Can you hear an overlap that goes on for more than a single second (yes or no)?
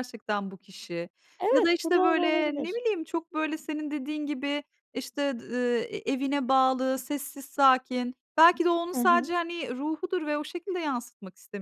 yes